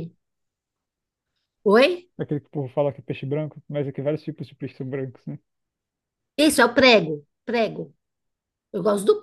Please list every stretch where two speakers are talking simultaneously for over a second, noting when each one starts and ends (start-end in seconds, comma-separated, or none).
none